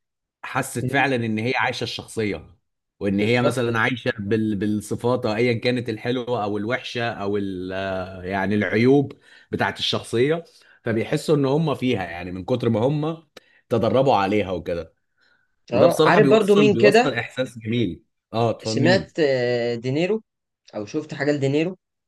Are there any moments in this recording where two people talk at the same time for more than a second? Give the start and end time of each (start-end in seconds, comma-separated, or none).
15.7-17.1